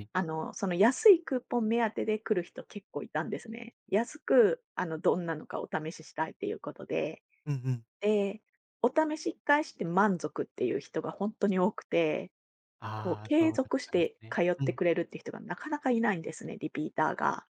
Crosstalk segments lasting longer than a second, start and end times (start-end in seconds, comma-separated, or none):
12.9-14.8